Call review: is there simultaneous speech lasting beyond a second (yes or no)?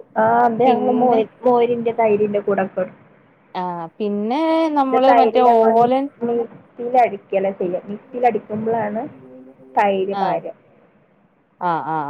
no